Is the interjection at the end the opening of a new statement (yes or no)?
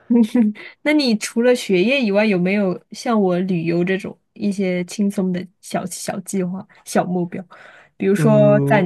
no